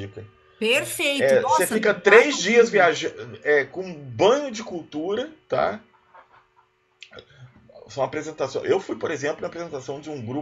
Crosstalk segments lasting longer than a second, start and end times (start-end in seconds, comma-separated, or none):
1.1-2.8